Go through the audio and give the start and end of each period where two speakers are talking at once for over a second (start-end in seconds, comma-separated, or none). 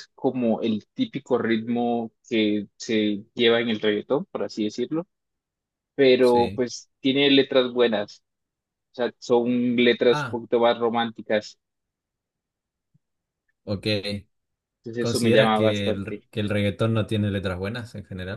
15.0-16.3